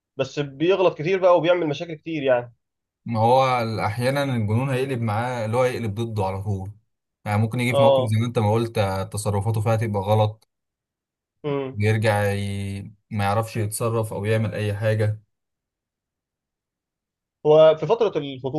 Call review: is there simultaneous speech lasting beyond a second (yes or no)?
no